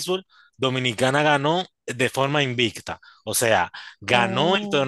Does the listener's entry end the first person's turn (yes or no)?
no